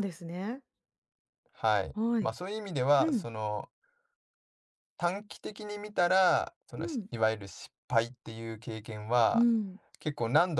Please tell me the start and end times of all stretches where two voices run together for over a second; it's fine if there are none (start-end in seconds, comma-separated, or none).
none